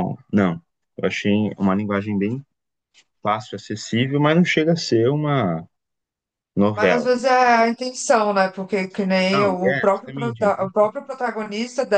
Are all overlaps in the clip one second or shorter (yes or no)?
no